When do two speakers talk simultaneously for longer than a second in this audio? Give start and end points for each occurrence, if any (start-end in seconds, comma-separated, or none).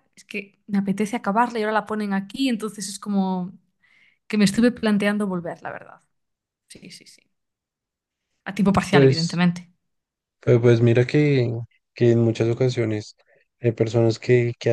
none